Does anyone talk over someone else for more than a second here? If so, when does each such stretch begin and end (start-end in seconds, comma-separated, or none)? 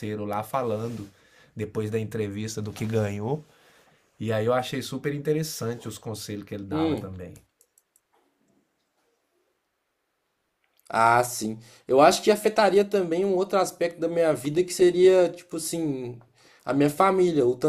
none